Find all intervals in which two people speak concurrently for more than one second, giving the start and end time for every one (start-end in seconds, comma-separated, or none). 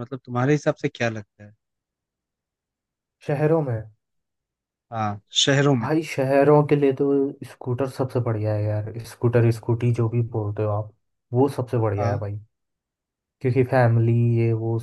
none